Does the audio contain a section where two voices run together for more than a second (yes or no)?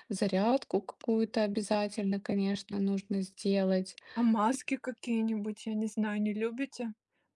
no